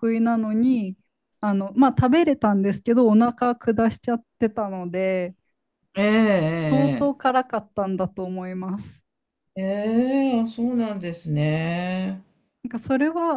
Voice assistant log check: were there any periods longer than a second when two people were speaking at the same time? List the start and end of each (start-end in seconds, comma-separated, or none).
none